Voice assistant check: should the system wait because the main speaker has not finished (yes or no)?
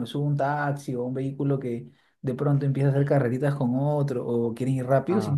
yes